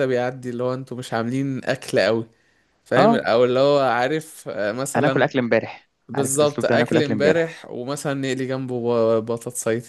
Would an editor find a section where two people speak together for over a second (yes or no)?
yes